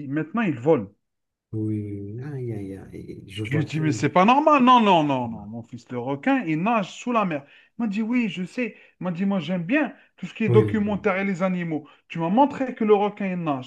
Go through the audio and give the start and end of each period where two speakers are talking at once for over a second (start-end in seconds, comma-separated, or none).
none